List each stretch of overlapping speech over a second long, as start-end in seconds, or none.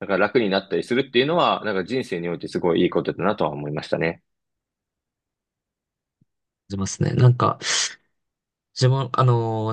none